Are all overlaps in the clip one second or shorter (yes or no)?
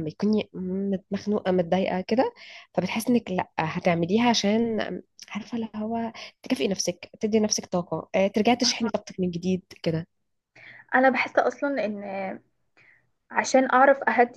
yes